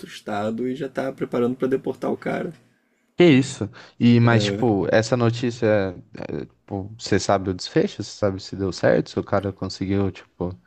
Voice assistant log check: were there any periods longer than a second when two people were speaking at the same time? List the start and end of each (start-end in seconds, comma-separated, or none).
none